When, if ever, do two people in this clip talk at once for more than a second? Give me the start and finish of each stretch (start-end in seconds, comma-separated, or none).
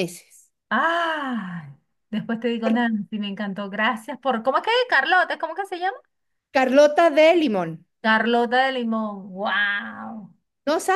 none